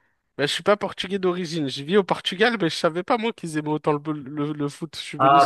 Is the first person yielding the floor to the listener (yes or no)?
yes